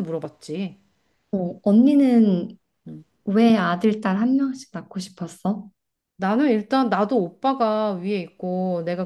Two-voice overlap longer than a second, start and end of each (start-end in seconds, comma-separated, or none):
none